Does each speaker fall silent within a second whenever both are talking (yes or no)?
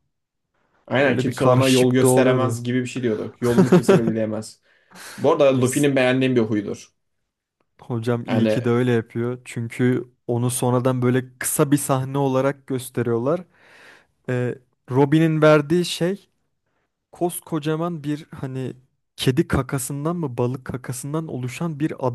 no